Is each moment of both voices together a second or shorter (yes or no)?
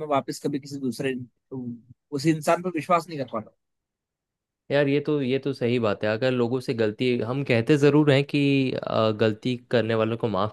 yes